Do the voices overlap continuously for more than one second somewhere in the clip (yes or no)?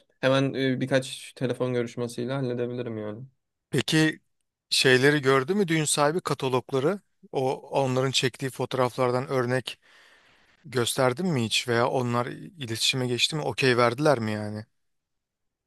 no